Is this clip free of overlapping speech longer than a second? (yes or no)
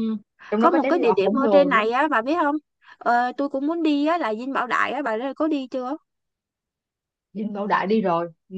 no